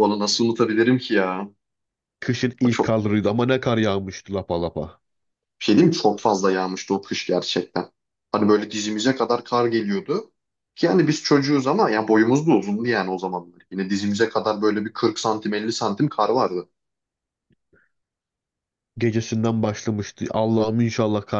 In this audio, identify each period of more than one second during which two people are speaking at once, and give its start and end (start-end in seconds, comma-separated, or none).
none